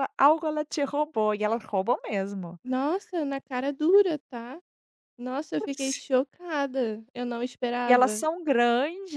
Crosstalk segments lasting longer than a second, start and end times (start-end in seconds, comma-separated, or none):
none